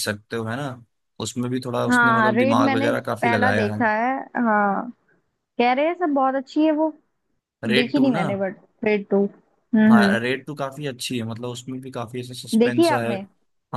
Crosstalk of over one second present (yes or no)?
yes